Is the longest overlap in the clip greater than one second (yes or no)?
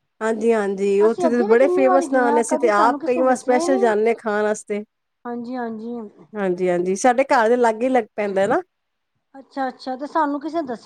yes